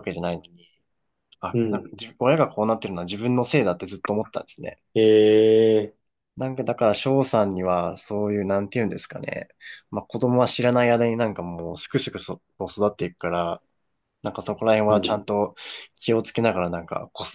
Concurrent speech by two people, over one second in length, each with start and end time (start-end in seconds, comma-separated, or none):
none